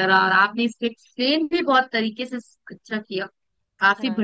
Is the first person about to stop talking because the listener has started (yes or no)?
no